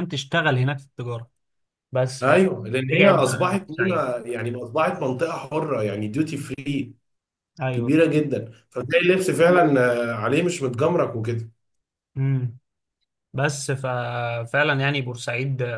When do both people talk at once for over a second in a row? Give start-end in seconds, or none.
2.2-4.1